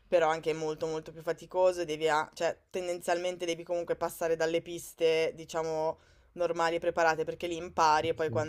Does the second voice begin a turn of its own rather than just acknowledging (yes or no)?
no